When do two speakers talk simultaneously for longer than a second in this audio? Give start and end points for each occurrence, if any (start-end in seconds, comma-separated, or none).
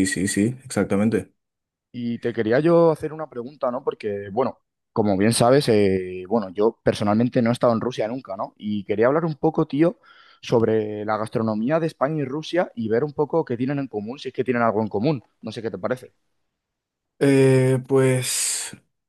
none